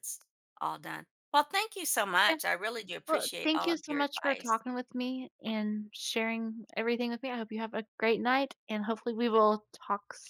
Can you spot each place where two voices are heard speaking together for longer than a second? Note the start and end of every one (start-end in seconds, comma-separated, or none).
3.1-4.6